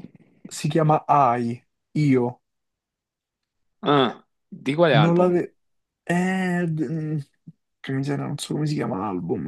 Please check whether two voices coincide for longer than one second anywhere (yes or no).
no